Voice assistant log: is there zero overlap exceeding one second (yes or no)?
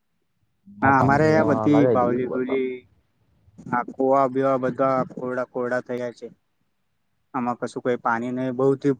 no